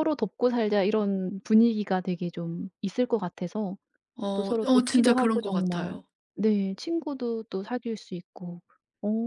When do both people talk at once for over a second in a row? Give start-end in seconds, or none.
4.3-6.0